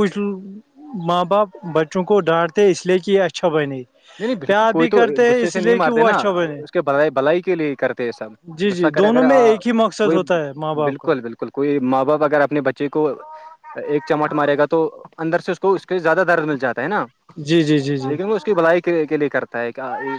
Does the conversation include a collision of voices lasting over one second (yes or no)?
yes